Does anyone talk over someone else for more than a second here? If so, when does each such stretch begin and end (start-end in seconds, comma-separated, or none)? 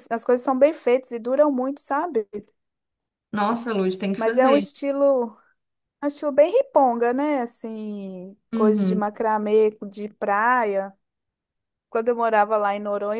none